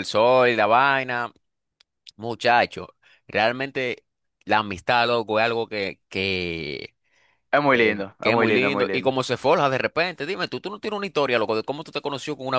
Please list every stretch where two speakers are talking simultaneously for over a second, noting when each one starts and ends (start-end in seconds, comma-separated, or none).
7.7-9.1